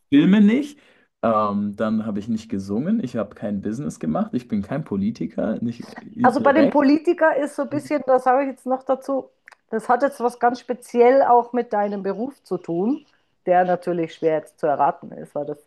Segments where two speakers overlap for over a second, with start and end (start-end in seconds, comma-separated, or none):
none